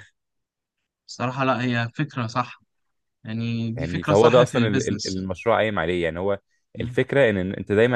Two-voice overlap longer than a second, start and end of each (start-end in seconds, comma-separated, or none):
3.8-5.3